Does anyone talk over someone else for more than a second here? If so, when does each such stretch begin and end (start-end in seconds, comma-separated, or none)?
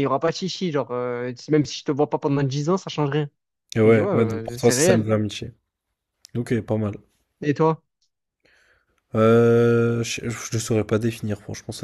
3.8-5.1